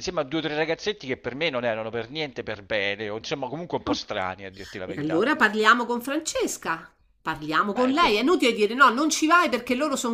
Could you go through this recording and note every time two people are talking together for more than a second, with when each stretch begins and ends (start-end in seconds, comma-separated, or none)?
none